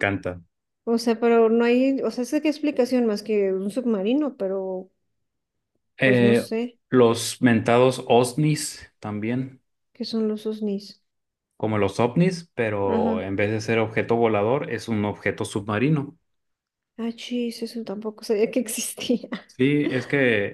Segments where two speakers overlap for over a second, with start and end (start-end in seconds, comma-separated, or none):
none